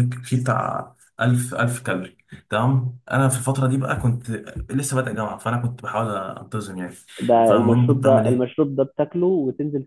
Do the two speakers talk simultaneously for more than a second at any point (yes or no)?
yes